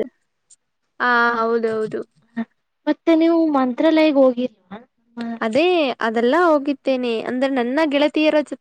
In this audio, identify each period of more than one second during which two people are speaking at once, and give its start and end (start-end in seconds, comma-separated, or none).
none